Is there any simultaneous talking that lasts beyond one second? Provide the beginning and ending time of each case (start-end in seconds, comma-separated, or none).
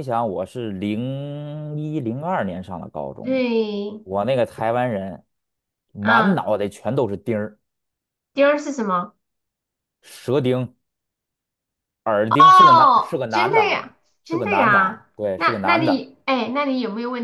12.3-16.1